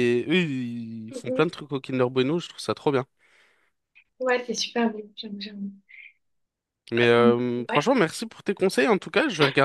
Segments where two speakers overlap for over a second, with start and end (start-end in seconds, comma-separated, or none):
none